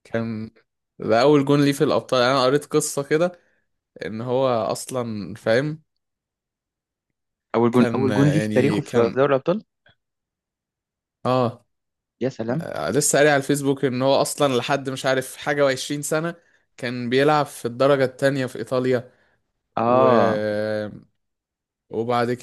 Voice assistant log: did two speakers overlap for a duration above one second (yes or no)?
yes